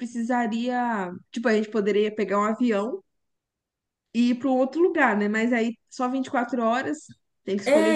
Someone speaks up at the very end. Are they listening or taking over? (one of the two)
taking over